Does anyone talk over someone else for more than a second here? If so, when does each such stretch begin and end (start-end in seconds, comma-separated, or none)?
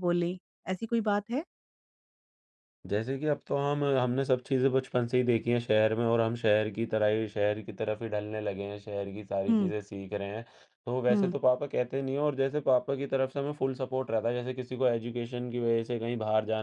none